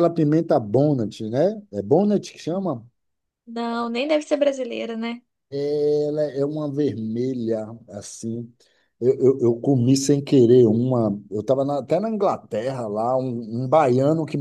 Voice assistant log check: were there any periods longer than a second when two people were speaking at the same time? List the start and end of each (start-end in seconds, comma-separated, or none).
none